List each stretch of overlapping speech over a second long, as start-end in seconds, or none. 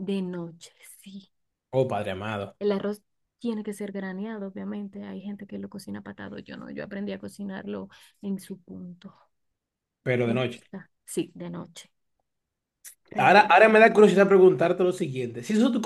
none